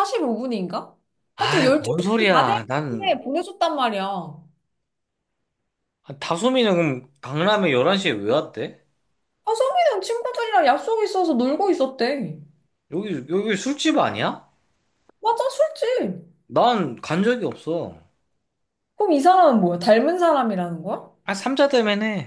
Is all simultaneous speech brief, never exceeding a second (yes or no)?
no